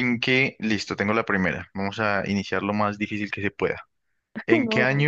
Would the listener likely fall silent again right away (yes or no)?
yes